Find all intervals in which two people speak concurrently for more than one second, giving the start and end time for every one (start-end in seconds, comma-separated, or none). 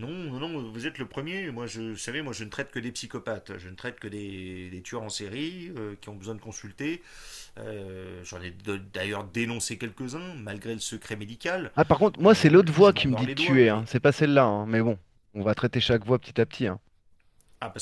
12.2-13.9